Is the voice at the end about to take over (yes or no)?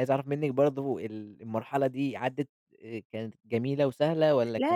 yes